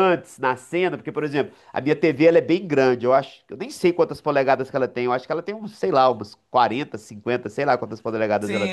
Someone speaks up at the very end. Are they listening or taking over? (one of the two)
taking over